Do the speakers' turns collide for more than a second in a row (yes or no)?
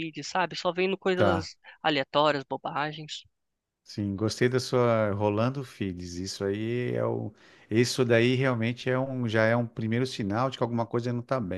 no